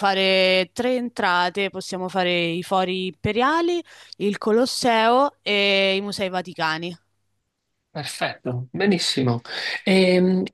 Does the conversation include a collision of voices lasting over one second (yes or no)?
no